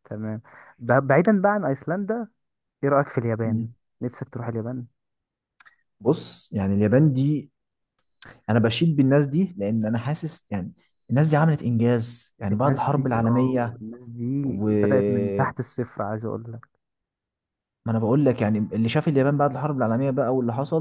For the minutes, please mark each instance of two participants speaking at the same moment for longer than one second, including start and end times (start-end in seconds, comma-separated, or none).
12.5-13.8